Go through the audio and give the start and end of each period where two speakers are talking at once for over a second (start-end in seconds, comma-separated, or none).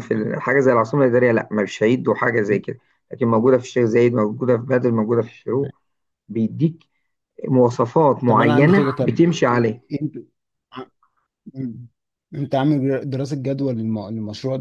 8.2-9.8